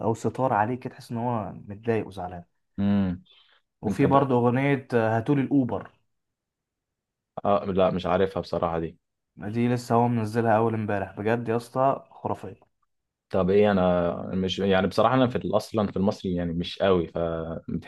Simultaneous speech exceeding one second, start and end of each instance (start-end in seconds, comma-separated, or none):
none